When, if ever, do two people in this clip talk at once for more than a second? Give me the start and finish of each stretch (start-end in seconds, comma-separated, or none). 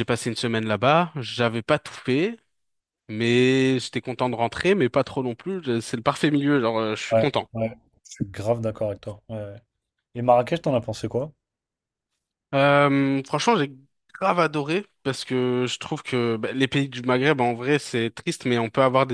none